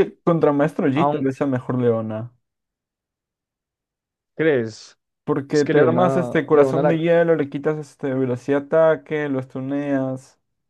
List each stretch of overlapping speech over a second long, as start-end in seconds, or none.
5.5-7.0